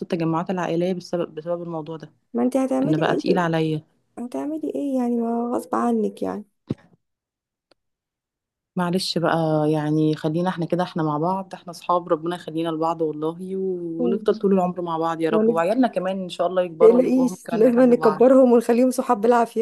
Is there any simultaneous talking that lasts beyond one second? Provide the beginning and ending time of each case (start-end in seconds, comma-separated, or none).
16.8-18.3